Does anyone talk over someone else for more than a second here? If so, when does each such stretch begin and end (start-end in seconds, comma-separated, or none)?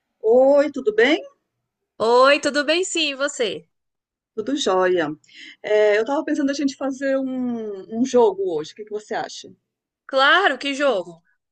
none